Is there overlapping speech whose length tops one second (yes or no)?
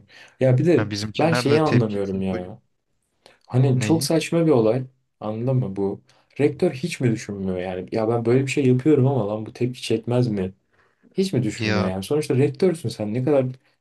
yes